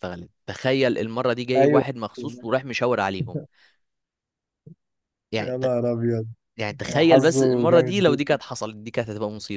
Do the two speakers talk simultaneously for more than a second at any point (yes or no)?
yes